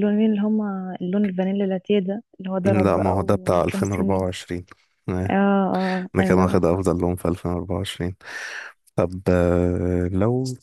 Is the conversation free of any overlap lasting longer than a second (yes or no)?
no